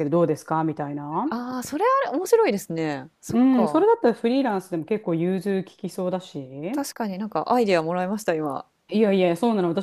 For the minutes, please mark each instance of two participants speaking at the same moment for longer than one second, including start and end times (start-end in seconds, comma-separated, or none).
none